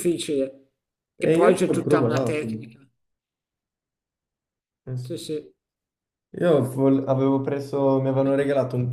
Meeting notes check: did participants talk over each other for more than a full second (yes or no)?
yes